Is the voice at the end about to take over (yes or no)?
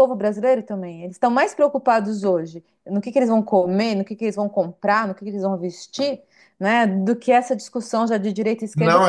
yes